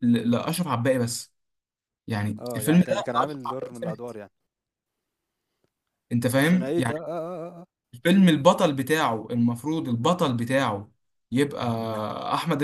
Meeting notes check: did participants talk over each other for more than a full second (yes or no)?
yes